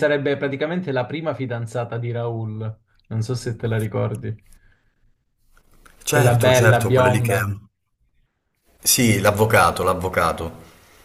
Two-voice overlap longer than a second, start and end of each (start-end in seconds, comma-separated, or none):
6.1-7.4